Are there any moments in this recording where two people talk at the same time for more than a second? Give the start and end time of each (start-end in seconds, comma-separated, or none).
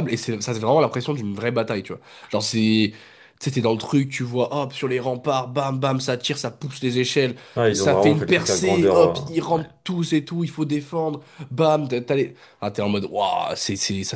7.7-9.6